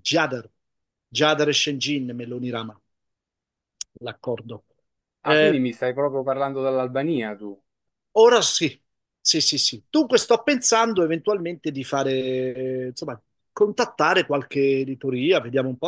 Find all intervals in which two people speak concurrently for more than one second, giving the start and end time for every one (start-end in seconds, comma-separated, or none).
none